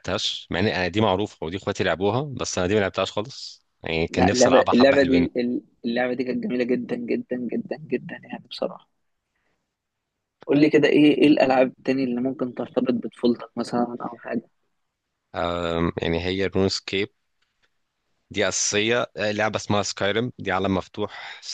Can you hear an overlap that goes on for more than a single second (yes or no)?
yes